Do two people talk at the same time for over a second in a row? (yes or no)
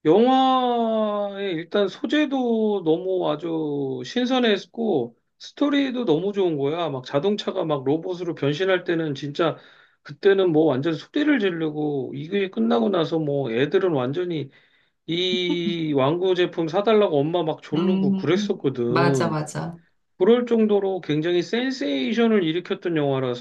yes